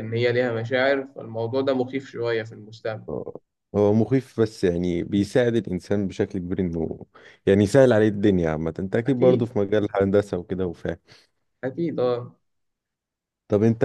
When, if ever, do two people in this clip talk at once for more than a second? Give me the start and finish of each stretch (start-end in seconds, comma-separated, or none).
none